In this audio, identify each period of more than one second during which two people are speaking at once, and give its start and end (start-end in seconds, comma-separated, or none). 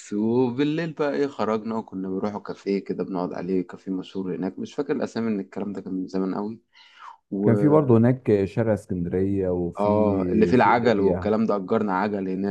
9.8-11.3